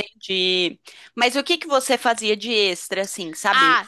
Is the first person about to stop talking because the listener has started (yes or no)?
yes